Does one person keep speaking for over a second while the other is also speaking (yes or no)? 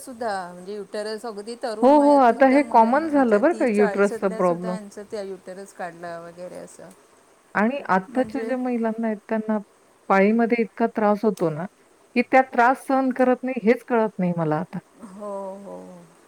yes